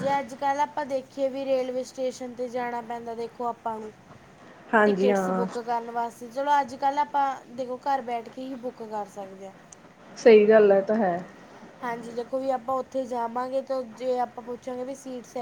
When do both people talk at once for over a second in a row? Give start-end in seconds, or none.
none